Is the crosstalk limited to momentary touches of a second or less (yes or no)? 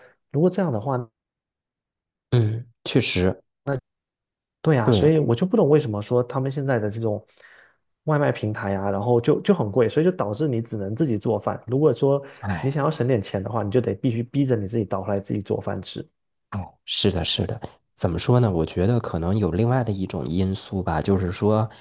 yes